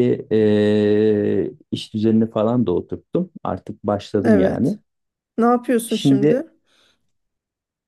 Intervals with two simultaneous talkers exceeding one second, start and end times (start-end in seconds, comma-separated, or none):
none